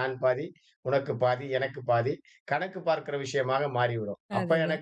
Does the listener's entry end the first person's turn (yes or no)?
no